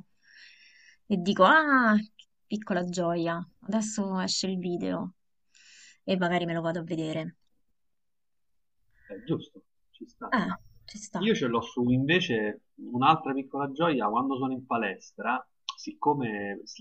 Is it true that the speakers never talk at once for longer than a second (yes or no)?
yes